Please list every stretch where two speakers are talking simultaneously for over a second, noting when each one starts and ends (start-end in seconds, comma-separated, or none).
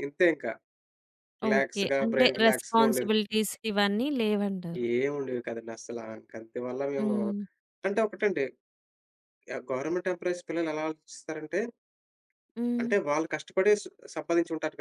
1.5-3.1